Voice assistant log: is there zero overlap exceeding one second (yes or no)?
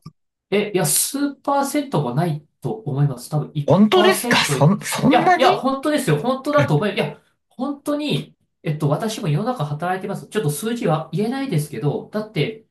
no